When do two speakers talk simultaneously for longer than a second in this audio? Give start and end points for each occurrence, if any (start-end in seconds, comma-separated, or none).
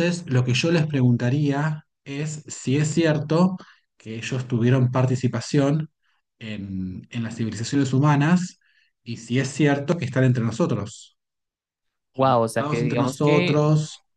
12.1-13.6